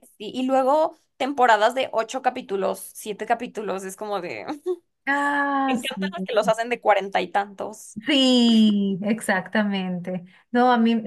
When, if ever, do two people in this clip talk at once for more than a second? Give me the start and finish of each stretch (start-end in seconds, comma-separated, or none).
none